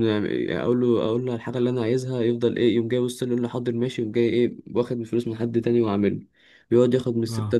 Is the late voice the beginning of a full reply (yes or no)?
no